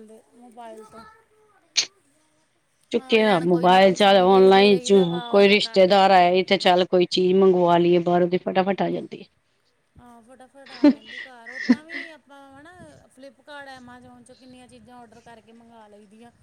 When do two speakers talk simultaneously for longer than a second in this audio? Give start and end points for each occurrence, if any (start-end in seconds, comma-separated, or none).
3.1-6.3